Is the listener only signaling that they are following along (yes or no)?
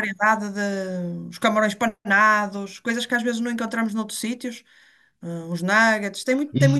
no